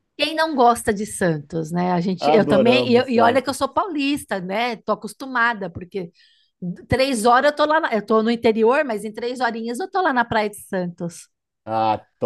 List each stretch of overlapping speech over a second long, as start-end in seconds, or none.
2.2-3.6